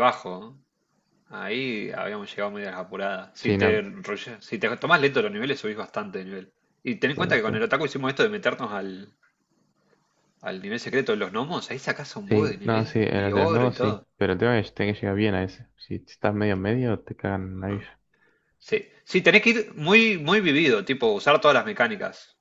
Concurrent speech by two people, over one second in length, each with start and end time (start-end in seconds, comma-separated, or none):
12.3-14.1